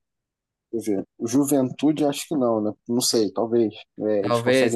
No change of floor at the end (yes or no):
yes